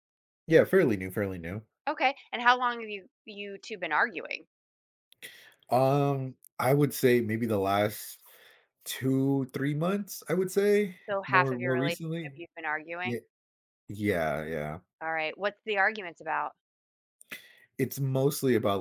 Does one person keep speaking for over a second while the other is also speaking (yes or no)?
yes